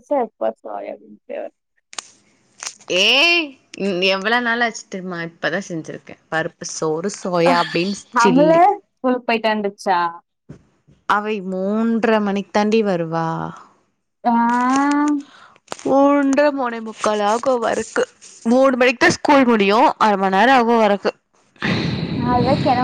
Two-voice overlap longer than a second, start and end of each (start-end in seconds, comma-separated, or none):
none